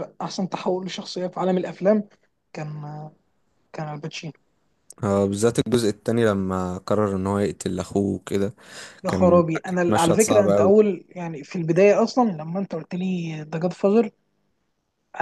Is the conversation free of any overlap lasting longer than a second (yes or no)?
no